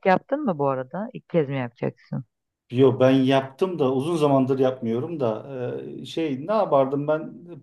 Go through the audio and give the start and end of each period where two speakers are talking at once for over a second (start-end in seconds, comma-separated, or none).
none